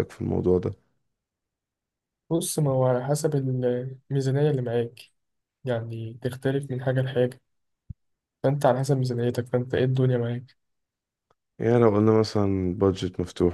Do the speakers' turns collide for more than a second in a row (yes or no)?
no